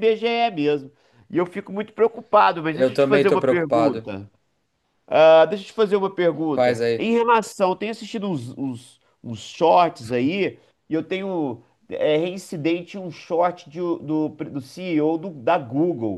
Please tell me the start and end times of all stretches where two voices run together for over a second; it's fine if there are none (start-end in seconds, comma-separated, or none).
2.7-4.1